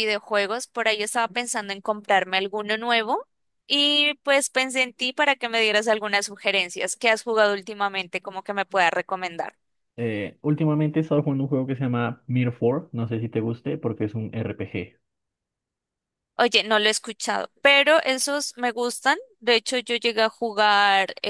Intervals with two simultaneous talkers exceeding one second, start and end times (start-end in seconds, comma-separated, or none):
none